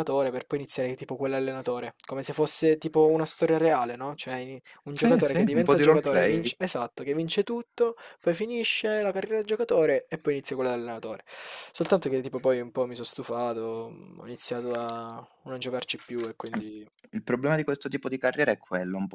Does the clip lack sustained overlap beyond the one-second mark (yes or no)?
no